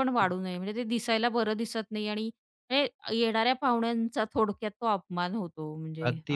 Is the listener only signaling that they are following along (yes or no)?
no